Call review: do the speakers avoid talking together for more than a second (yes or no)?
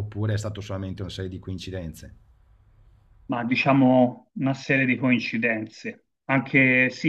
yes